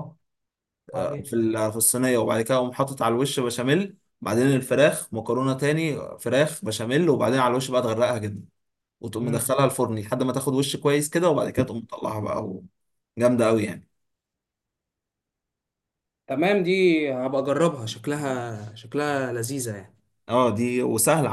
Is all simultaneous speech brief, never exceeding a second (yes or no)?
yes